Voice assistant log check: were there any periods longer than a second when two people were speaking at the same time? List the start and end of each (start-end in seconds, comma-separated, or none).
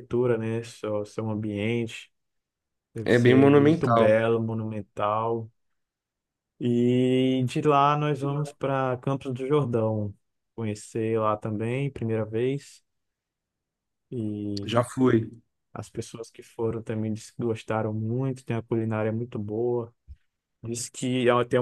3.0-4.2